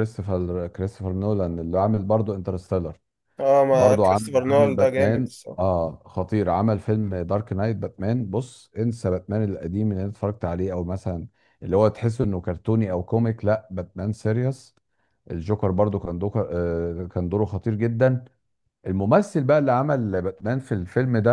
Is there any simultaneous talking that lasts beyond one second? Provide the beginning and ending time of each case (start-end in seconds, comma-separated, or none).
3.7-5.8